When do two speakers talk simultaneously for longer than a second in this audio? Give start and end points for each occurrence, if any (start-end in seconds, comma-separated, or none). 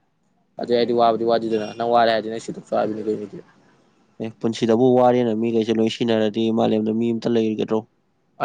none